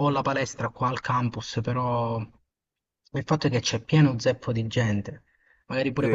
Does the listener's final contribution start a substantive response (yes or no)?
yes